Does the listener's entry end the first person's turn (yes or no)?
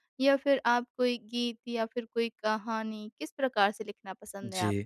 yes